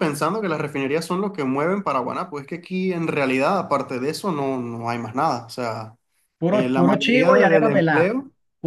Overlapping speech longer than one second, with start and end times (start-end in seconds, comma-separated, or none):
6.5-8.1